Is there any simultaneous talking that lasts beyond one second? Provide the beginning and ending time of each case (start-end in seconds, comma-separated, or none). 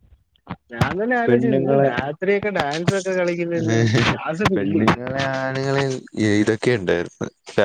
none